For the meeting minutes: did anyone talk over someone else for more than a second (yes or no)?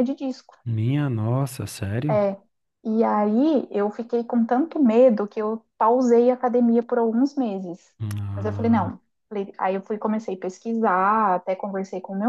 no